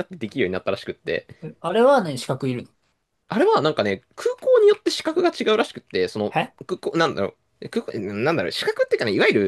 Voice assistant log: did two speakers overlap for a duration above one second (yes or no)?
no